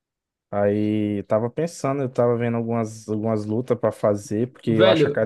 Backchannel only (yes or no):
no